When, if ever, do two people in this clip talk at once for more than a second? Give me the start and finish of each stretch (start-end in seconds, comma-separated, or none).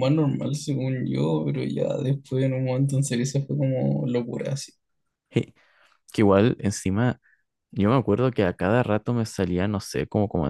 none